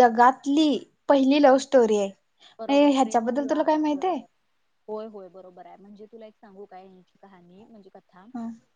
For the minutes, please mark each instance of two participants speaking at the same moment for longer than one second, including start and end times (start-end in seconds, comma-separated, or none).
2.7-4.2